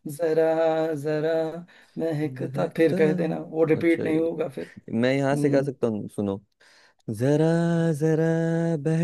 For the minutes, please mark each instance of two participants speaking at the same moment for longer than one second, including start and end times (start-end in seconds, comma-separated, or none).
none